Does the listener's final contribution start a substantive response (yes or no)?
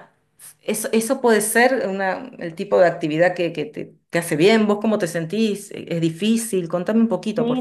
yes